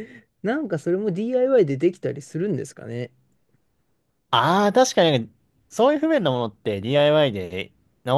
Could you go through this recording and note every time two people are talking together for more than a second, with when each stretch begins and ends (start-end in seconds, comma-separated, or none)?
none